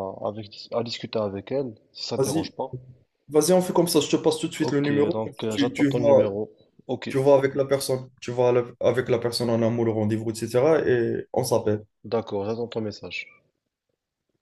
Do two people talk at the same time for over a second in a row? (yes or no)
yes